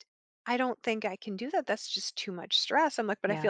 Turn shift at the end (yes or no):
no